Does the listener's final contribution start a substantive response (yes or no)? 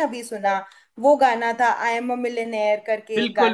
yes